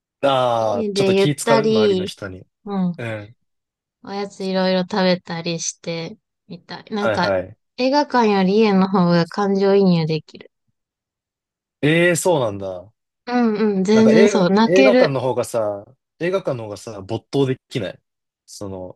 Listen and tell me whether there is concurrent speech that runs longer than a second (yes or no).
yes